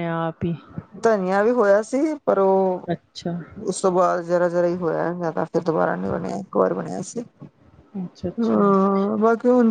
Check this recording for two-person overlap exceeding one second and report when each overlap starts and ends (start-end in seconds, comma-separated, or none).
none